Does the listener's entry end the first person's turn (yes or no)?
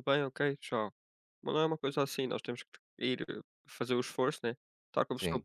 no